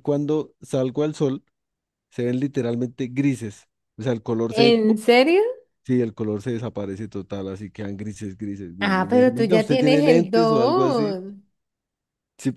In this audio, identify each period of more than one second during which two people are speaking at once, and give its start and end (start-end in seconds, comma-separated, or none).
8.8-11.2